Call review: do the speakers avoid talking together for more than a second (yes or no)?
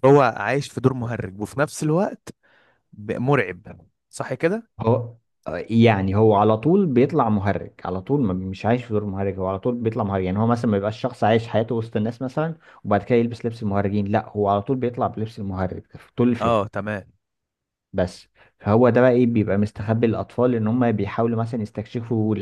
yes